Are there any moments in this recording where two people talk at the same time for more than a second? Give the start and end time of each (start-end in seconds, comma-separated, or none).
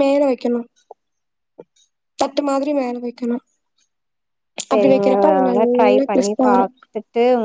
none